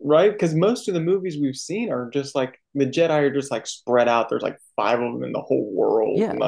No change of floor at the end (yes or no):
no